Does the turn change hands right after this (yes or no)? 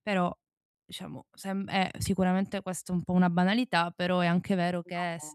no